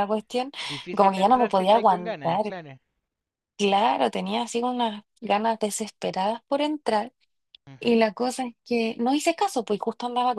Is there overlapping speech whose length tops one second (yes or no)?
yes